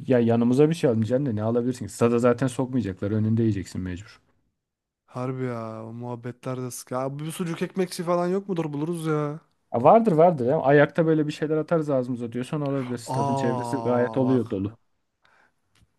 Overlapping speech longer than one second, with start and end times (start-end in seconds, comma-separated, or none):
13.2-14.4